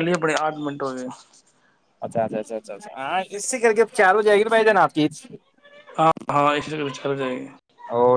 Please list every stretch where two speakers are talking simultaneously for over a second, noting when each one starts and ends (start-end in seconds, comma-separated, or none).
none